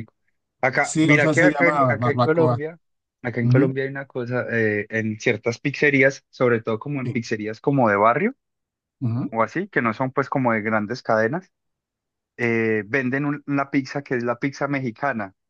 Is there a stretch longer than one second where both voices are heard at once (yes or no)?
yes